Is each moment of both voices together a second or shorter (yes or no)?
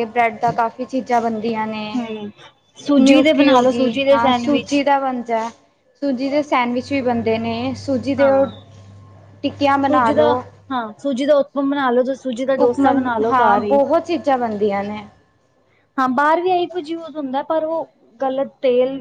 no